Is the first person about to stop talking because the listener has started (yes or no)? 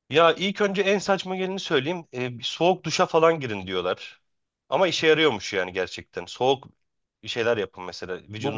yes